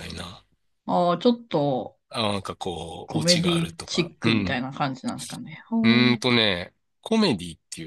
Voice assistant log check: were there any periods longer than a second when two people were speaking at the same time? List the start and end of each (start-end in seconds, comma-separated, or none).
3.0-4.6